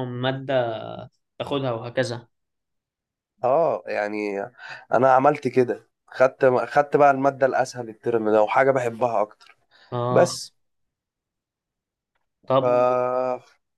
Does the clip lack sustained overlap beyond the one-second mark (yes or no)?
yes